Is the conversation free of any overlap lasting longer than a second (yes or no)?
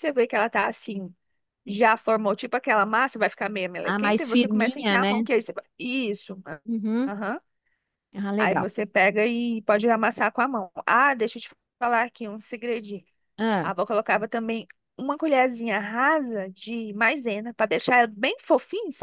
no